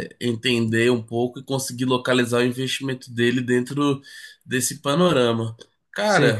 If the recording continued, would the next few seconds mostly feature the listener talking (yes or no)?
yes